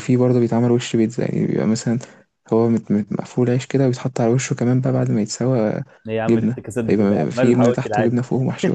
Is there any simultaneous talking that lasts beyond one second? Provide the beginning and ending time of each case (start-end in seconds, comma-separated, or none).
6.3-8.2